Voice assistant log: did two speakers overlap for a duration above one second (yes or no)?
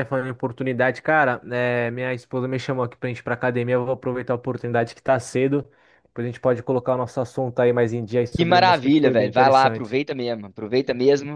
yes